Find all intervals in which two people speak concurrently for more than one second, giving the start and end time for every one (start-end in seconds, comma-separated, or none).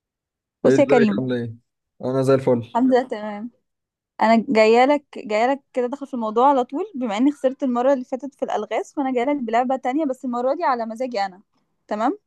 none